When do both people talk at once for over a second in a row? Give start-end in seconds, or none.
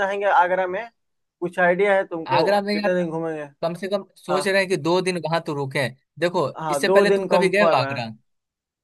6.6-7.9